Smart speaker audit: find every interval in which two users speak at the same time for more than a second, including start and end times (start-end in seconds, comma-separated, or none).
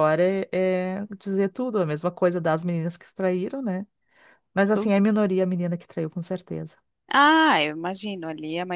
none